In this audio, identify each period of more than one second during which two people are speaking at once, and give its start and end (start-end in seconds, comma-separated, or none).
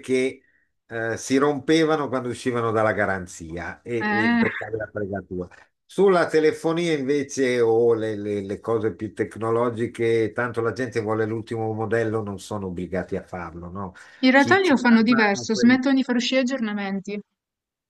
14.3-15.8